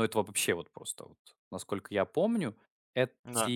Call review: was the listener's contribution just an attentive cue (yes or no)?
yes